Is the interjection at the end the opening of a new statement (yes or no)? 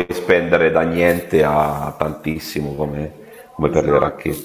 yes